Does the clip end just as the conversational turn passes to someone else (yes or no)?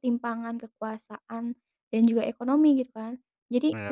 no